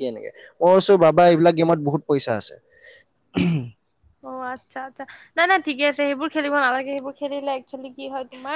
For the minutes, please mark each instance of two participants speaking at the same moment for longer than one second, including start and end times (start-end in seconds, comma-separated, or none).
none